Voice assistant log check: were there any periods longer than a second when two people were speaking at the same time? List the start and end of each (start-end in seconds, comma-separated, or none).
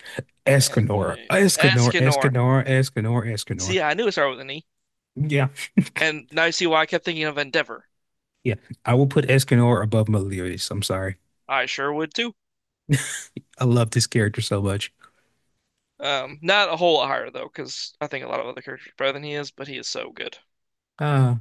0.6-2.3